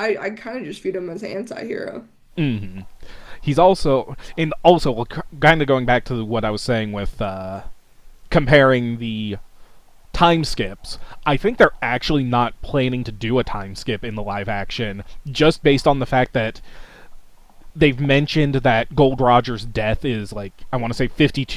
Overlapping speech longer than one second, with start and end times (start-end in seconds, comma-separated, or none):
none